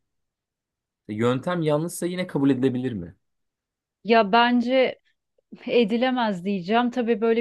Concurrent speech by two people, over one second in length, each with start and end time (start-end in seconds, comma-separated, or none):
none